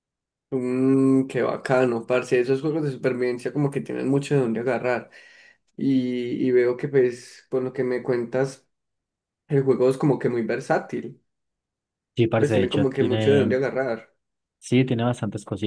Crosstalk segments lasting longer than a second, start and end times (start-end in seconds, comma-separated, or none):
12.4-13.6